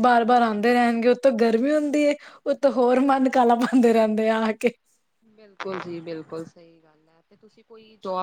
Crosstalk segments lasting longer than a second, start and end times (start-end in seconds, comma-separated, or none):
none